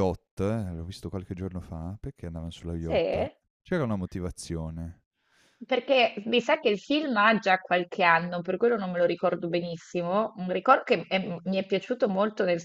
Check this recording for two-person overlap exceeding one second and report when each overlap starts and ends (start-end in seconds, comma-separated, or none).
none